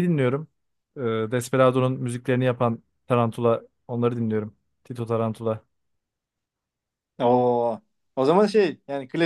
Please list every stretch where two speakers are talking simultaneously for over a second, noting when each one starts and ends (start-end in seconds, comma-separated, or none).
none